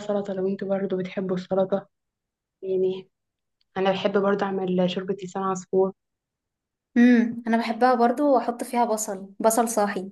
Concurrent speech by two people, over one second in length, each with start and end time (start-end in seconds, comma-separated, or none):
none